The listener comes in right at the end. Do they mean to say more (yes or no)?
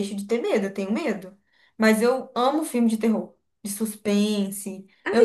yes